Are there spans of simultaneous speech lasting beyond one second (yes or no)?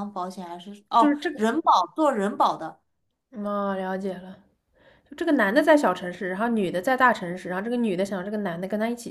no